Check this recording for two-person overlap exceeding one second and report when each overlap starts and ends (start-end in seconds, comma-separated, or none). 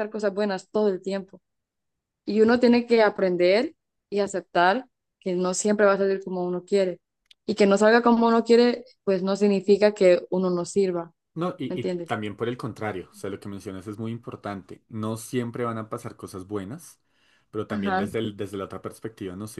none